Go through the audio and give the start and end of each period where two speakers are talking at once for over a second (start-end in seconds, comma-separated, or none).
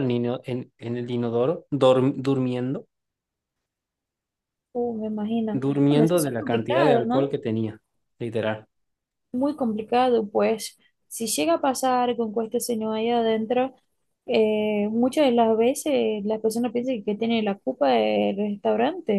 5.5-7.3